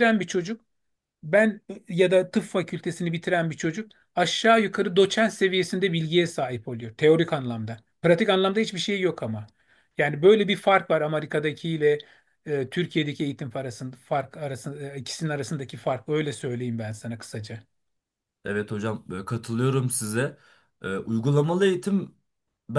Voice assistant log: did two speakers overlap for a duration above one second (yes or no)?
no